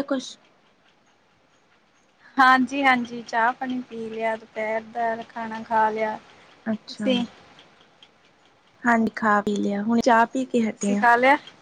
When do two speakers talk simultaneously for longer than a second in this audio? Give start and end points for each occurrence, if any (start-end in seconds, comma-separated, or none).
none